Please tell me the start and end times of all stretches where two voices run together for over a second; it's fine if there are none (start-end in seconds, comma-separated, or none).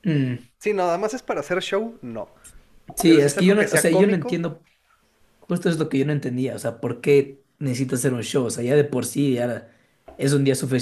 3.0-4.4